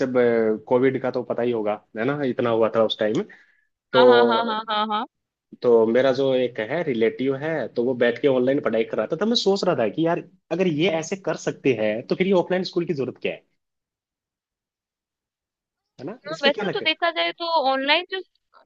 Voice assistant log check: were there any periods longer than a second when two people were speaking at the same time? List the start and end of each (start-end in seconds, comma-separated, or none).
none